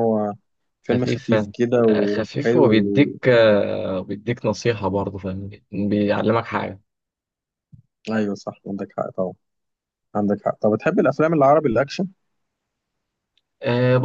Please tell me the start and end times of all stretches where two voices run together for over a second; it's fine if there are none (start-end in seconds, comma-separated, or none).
0.9-3.1